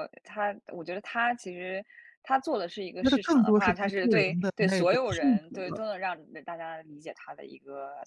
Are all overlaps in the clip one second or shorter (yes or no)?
no